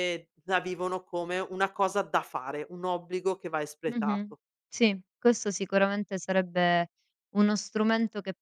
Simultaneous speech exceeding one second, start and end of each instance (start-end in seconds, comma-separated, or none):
none